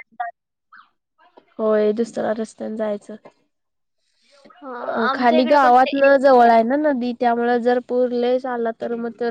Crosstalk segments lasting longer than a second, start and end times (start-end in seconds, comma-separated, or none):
5.1-6.4